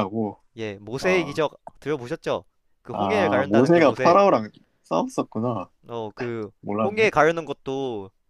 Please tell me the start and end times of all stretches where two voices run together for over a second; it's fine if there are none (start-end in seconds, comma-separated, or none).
2.9-4.2